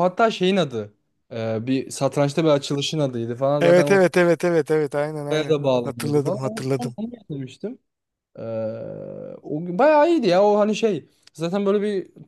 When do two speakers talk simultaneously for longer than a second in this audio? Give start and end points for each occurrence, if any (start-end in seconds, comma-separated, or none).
5.3-7.0